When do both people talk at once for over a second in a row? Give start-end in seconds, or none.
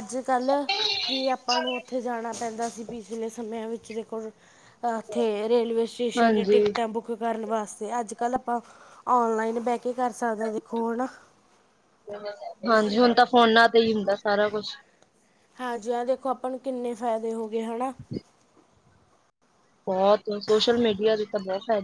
none